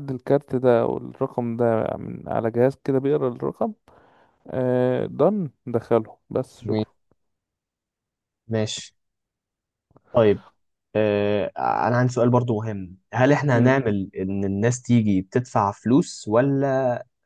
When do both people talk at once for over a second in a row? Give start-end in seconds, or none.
none